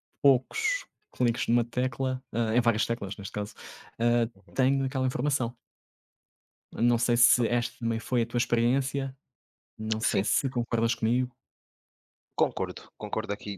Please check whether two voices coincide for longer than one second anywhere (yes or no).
no